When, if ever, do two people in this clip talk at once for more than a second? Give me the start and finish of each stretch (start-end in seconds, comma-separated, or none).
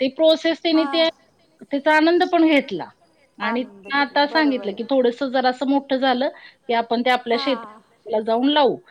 3.5-4.9